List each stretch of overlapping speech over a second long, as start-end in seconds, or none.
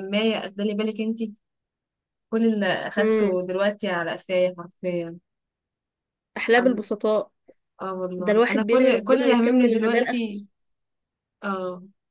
8.2-10.1